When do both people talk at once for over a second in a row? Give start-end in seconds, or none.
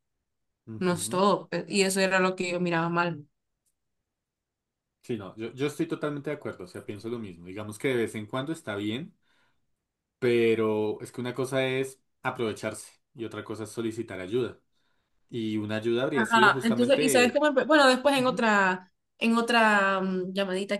16.1-17.4